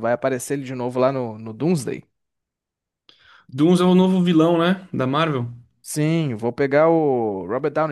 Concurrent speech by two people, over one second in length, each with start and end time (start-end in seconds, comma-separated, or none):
none